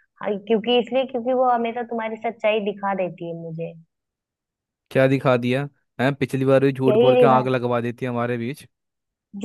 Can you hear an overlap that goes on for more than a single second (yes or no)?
no